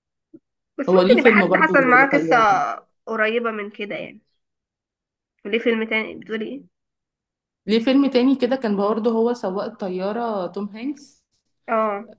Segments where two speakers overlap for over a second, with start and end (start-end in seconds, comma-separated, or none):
0.9-2.4